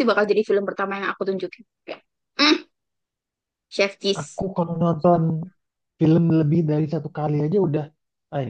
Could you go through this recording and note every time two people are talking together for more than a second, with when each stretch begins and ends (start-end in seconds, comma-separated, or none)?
none